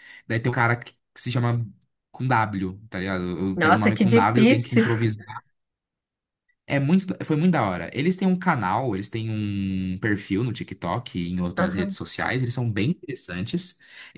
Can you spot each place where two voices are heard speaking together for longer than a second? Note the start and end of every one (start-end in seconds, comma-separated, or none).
3.5-4.9